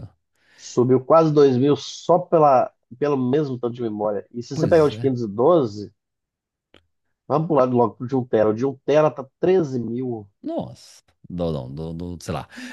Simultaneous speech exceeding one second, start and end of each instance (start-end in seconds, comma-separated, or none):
none